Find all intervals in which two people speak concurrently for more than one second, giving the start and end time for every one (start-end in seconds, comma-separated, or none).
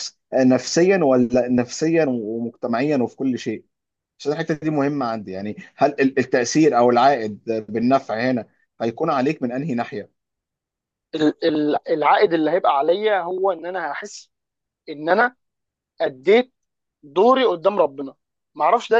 none